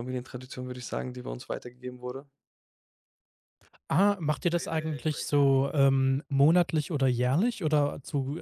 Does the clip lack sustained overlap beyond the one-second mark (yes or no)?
yes